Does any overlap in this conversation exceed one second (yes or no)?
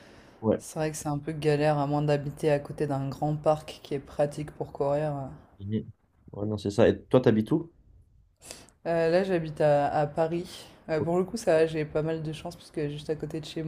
no